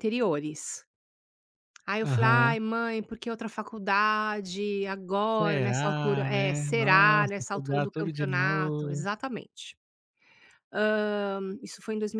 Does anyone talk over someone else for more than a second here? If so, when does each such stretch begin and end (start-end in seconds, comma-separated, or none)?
5.4-9.1